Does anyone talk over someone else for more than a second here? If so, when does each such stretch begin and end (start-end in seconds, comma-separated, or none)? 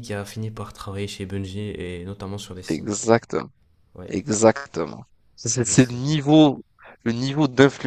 none